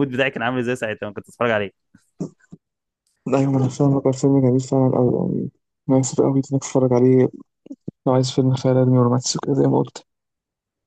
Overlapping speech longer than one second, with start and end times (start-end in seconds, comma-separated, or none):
none